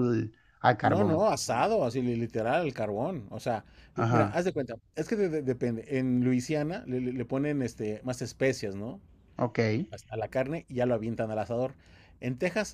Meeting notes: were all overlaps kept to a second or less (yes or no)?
yes